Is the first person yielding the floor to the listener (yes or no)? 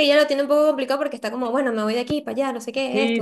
yes